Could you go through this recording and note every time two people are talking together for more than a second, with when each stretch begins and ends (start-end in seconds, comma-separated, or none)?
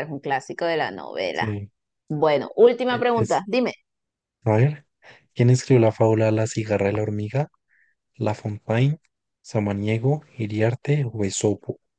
none